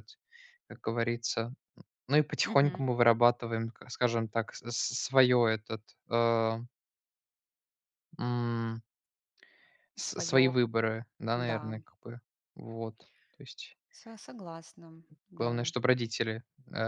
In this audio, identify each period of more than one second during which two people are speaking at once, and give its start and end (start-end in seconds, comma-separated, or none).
none